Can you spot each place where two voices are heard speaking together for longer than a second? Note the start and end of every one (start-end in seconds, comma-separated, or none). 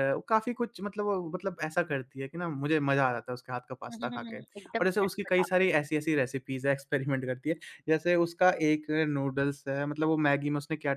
3.9-5.5